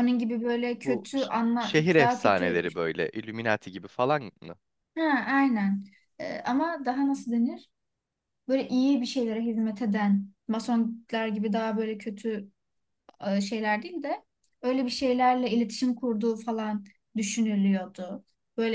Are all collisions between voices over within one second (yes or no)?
no